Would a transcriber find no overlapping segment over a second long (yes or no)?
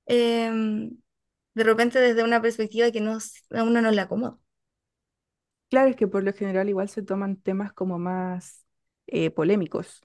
yes